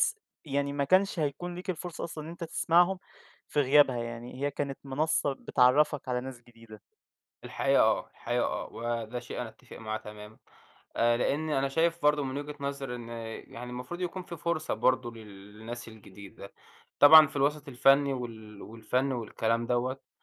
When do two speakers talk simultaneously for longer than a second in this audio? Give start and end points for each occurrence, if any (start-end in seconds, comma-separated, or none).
none